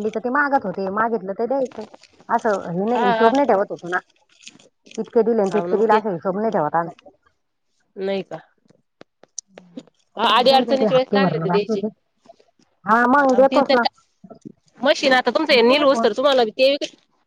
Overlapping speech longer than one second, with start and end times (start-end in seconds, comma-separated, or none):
10.4-11.8